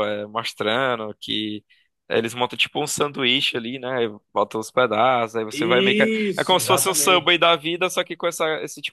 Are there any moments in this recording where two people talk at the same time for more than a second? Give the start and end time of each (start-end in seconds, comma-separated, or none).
5.5-7.3